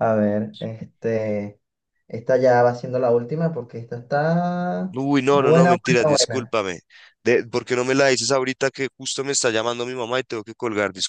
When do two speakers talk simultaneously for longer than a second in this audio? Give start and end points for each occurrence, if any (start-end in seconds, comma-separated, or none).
4.9-6.6